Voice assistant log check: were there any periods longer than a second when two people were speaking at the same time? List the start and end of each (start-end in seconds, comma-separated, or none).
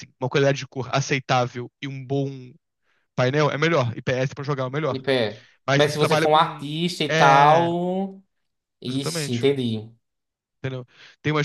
5.7-7.7